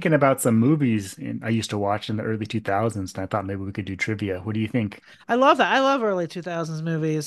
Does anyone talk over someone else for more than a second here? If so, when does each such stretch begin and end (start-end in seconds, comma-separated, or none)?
none